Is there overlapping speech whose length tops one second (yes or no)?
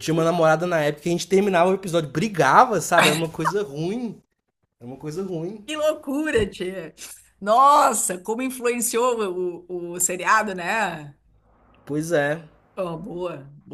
no